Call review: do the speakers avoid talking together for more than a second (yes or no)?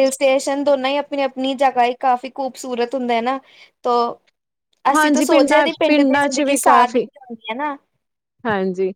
no